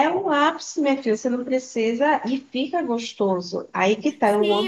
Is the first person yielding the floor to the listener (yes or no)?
yes